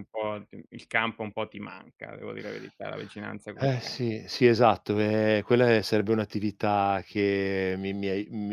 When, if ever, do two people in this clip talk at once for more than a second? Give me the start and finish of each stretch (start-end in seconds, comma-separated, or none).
none